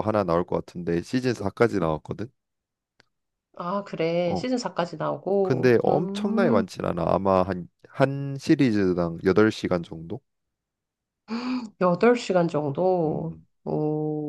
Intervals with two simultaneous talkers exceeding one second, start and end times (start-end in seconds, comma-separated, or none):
5.4-6.6